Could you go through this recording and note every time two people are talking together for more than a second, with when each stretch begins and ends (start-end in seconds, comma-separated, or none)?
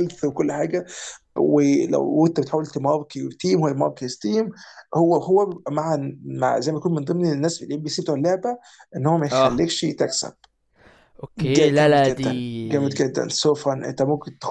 11.4-13.0